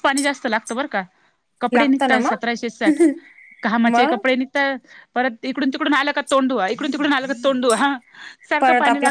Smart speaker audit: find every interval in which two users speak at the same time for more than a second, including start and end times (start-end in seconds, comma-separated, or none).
1.7-3.0